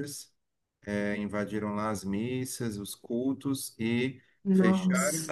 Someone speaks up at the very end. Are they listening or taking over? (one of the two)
listening